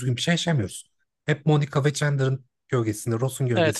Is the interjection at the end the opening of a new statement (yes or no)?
yes